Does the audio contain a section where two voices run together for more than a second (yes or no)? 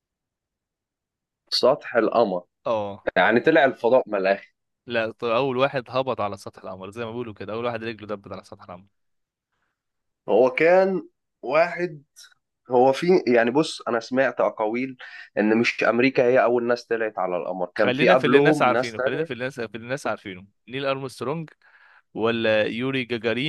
yes